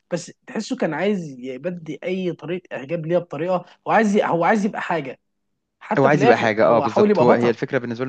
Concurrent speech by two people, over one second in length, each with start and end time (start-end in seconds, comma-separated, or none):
6.0-7.6